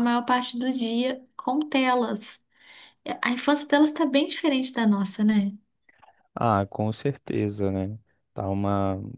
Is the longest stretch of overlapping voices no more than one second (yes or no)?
yes